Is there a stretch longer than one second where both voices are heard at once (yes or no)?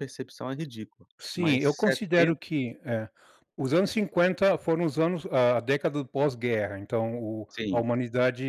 yes